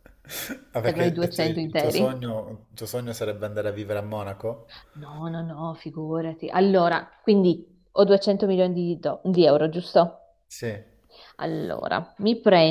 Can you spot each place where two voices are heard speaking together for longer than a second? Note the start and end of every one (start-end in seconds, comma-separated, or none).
0.8-2.2